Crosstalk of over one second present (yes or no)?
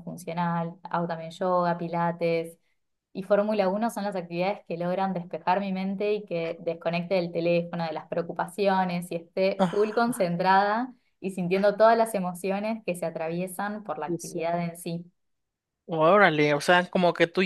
no